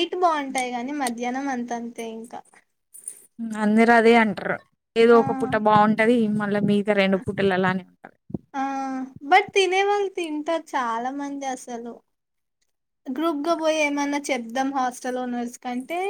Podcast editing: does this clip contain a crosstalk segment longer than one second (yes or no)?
no